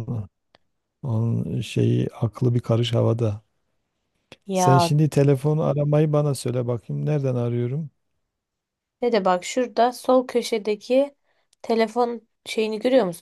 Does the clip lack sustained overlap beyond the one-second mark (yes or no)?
yes